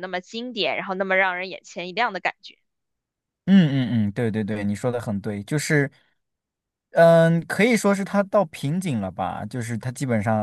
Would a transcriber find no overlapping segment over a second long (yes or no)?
yes